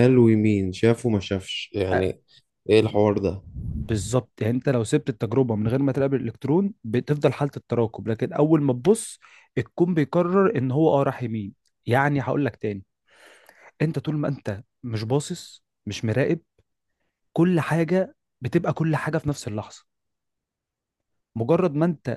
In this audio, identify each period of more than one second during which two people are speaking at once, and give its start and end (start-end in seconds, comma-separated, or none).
none